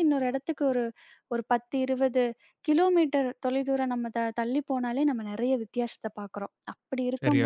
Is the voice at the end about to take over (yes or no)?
no